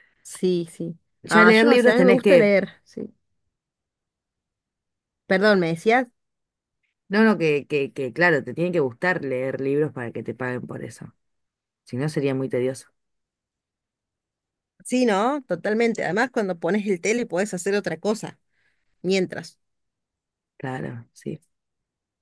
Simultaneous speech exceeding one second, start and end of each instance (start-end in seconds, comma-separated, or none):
1.2-2.5